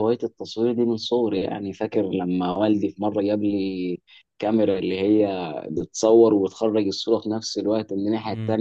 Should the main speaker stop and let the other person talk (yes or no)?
no